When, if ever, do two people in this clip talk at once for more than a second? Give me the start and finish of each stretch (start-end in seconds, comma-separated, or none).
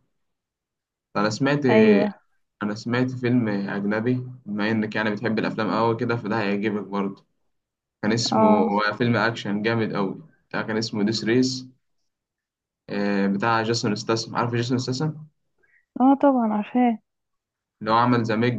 none